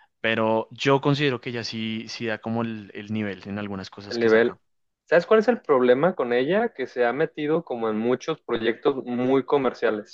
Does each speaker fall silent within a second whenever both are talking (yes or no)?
yes